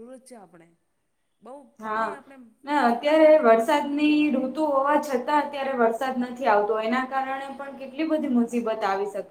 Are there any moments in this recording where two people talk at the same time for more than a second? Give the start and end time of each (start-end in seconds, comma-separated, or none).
2.9-4.5